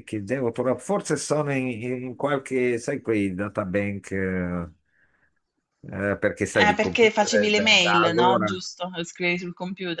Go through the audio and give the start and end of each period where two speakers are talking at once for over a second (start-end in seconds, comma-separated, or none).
6.5-8.6